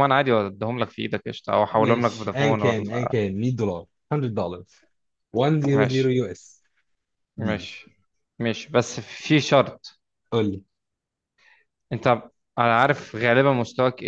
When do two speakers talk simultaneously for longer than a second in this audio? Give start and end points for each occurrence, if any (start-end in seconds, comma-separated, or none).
1.7-3.1